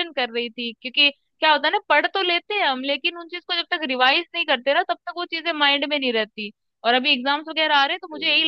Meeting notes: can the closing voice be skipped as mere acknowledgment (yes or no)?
yes